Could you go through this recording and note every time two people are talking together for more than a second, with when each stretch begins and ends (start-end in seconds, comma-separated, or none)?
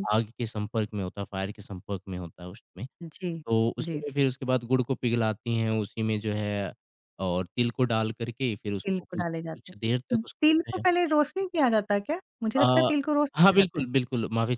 8.8-10.8